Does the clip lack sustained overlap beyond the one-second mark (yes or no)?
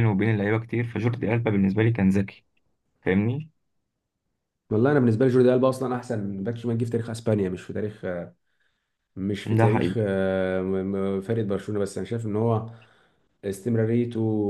yes